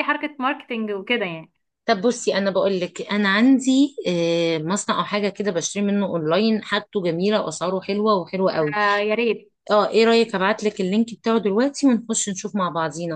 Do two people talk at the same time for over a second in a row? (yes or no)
no